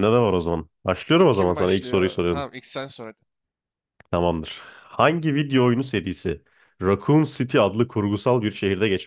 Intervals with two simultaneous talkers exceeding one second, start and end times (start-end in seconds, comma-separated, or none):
1.2-2.5